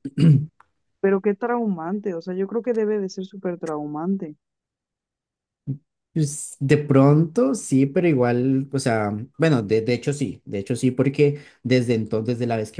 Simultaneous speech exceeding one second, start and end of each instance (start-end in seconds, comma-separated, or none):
none